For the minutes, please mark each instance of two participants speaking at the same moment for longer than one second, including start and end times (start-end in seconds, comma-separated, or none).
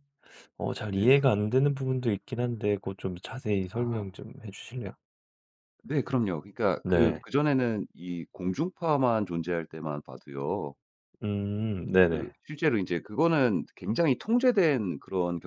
none